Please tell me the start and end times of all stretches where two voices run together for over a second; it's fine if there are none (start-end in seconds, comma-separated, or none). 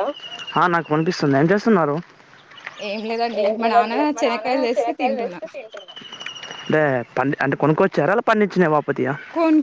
3.4-5.4